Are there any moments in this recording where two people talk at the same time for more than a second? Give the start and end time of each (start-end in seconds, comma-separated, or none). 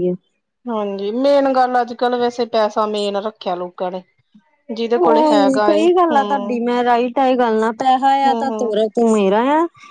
5.0-6.6